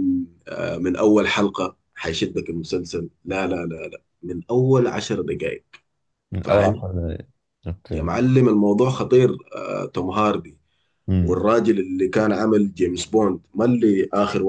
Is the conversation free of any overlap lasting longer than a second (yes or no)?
yes